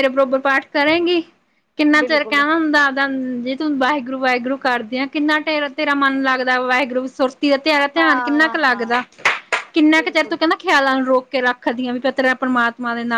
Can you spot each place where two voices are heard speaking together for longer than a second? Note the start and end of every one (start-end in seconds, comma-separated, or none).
7.7-9.0